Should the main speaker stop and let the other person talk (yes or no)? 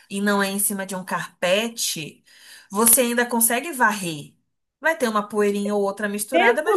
yes